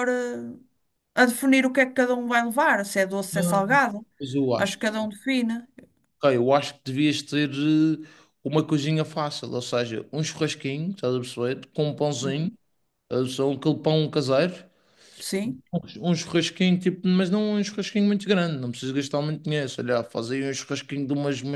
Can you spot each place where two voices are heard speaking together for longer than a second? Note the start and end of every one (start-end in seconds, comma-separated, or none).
none